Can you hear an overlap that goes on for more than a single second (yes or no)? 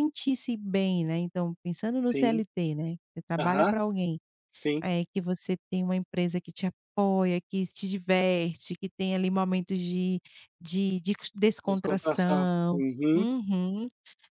yes